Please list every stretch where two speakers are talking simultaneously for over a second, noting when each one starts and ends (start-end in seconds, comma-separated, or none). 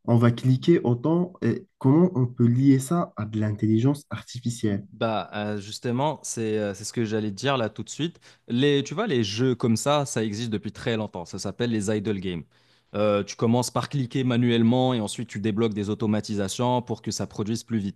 none